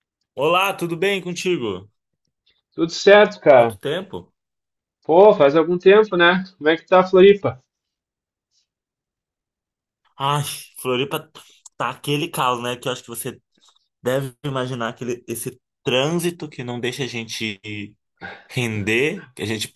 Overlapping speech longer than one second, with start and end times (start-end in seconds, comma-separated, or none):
none